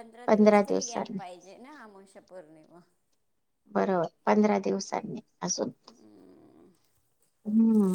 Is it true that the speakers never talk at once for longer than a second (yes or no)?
yes